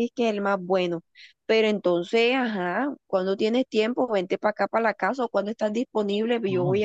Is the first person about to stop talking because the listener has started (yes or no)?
yes